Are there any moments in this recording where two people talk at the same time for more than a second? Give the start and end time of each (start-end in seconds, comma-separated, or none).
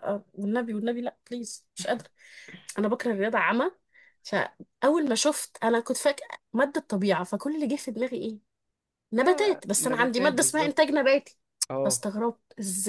9.2-11.0